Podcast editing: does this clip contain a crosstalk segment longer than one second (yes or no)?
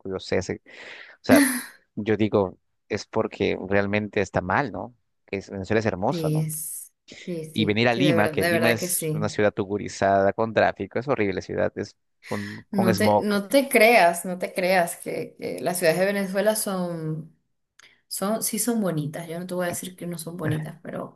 yes